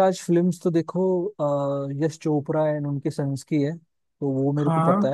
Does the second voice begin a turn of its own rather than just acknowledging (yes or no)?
no